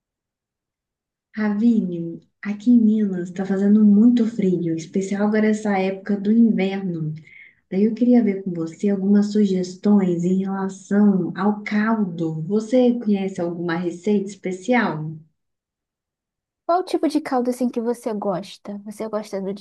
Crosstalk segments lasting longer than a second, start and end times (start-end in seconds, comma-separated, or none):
none